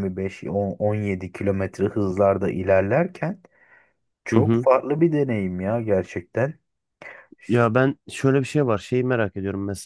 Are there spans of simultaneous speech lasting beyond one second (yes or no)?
no